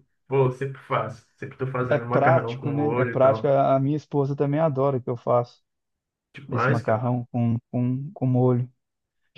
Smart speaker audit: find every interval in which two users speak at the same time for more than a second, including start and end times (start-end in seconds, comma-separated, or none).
1.9-3.5